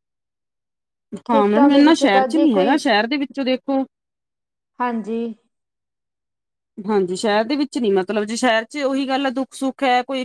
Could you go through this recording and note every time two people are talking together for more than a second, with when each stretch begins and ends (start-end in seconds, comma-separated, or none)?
1.3-2.8